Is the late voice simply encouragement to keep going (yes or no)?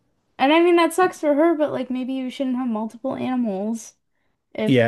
no